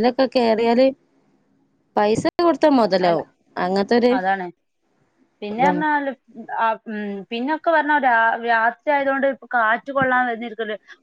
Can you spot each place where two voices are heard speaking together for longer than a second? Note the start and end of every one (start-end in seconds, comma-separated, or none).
none